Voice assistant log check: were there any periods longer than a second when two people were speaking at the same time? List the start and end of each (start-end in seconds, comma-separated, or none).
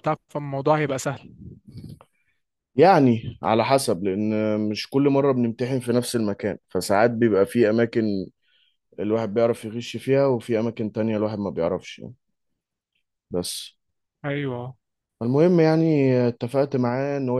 none